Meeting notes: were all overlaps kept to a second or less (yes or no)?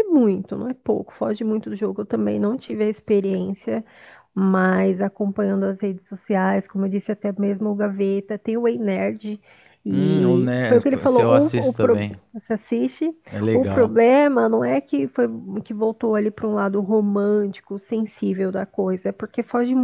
no